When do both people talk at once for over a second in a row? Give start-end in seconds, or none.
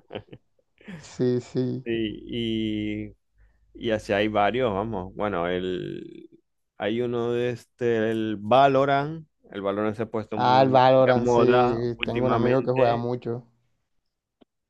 10.3-13.1